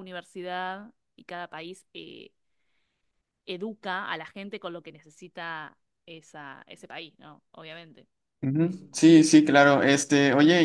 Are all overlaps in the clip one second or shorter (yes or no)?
yes